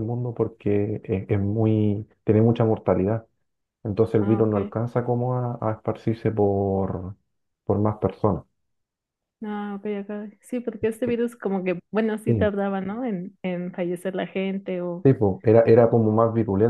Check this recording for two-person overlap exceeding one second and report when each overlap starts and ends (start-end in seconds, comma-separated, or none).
none